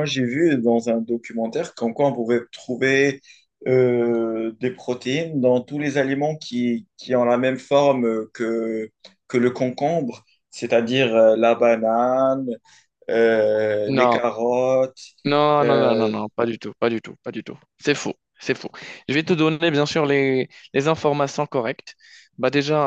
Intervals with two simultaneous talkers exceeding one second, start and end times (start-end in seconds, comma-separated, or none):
none